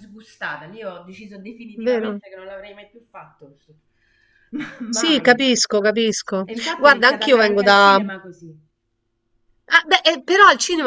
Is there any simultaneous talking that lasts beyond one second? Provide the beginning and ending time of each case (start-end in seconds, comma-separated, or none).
6.4-8.0